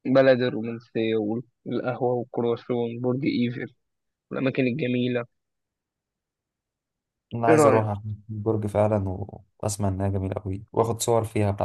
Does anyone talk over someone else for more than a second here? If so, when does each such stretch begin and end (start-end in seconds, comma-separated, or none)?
none